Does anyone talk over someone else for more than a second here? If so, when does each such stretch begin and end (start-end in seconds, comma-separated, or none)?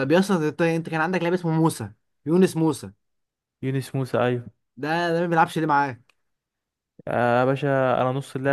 none